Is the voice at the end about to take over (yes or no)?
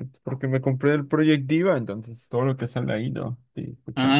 yes